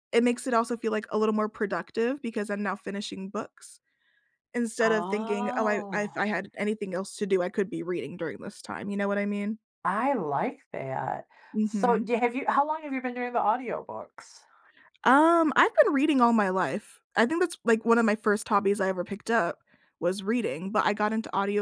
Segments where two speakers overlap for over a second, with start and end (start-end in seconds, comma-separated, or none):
4.8-6.1